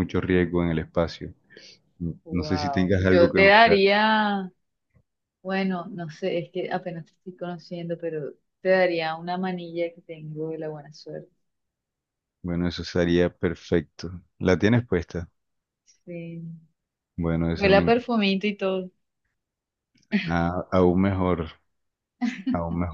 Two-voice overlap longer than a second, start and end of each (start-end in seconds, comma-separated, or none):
2.3-3.8